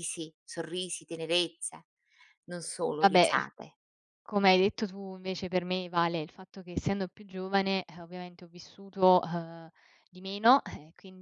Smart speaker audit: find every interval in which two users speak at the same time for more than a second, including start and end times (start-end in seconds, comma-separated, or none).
none